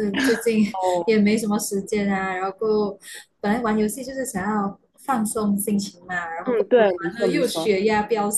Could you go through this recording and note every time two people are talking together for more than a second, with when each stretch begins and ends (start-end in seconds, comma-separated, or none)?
6.4-7.8